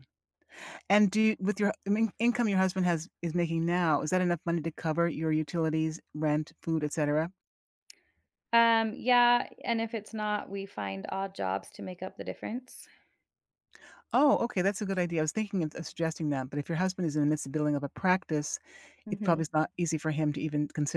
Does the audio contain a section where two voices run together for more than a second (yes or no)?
no